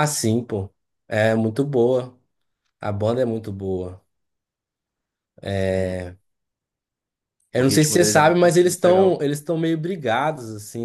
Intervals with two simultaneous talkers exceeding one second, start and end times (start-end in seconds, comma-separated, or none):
7.5-9.2